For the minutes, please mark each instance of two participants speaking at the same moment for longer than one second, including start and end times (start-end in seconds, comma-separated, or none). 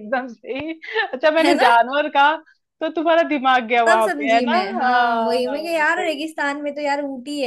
3.9-6.2